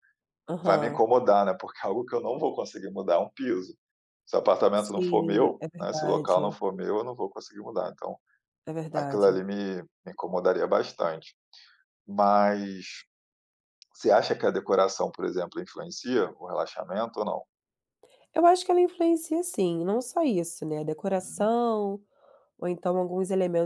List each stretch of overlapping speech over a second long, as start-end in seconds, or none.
4.8-6.5